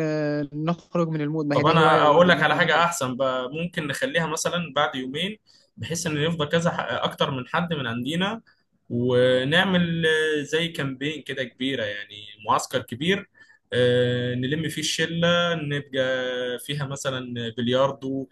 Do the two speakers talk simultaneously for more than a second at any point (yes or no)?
yes